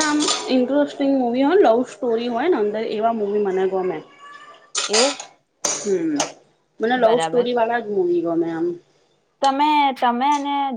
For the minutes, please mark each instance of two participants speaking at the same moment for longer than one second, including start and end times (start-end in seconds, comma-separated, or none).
none